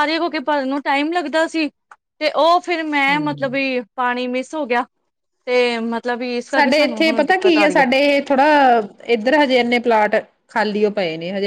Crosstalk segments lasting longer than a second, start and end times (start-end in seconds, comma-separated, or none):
none